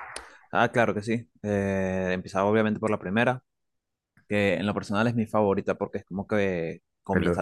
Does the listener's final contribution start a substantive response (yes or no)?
no